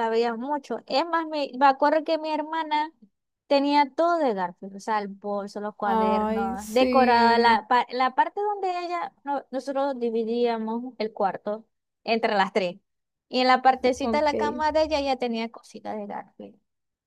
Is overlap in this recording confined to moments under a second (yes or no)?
no